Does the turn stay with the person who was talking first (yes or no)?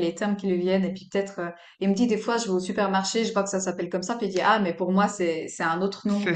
no